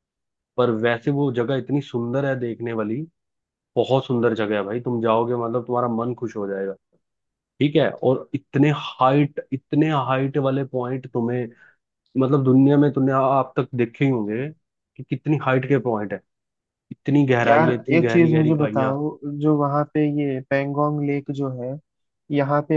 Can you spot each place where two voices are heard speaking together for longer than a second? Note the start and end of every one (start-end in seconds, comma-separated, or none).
17.4-18.9